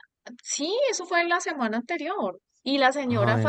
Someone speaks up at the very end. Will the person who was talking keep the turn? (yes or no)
yes